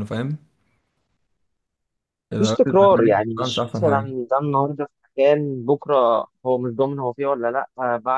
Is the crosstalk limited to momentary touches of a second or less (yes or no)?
no